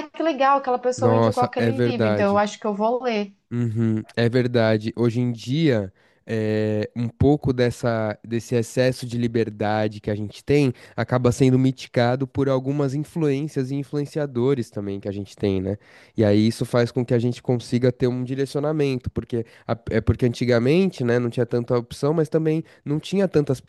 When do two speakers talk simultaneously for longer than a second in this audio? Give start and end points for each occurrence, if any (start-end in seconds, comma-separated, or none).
0.9-2.5